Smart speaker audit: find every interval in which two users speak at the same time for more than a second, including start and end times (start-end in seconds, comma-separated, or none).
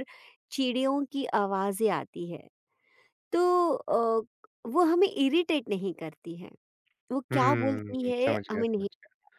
7.3-8.9